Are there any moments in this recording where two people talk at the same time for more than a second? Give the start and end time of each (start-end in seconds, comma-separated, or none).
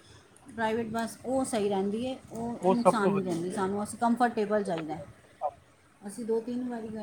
none